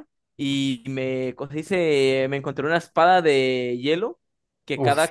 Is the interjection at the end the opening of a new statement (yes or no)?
no